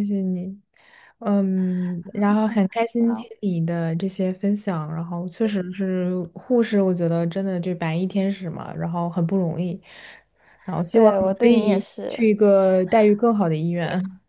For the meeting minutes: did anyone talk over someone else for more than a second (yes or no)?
yes